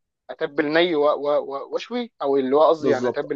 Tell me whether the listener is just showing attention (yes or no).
no